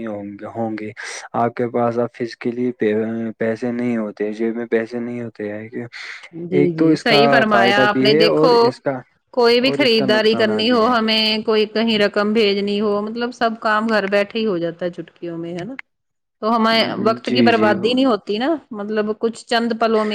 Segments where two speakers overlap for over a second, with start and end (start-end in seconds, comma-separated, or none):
6.6-8.5, 9.7-11.0